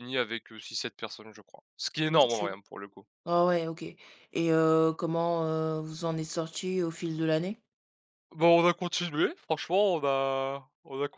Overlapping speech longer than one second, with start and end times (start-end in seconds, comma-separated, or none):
none